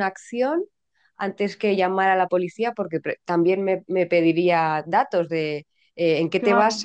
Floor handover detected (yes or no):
no